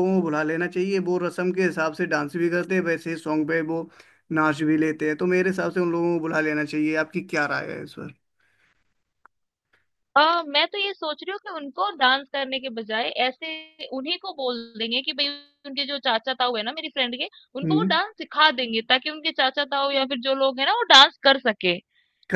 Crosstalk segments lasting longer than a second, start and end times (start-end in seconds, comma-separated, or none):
none